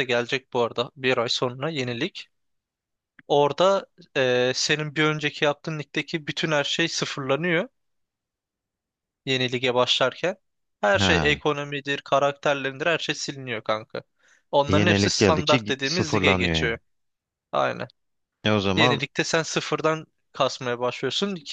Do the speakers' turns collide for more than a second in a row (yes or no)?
yes